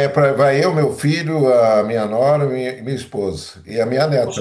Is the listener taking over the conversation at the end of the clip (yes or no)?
yes